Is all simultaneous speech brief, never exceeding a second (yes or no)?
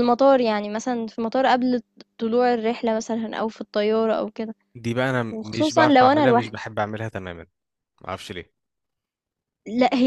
no